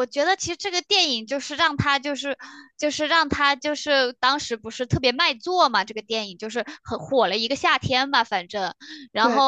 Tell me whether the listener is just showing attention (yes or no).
yes